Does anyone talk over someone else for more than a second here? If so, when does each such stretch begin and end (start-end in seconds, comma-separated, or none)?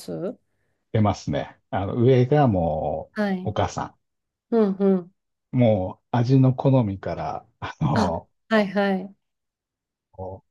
none